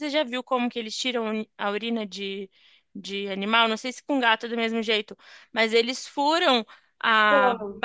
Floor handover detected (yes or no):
no